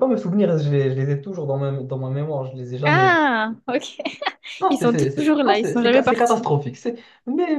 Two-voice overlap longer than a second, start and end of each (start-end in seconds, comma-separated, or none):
4.7-6.5